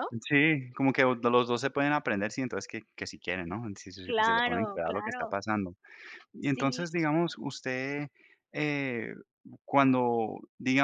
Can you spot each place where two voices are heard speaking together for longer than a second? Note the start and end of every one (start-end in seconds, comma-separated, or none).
4.0-5.4